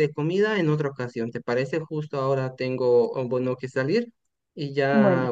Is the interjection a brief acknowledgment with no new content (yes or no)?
yes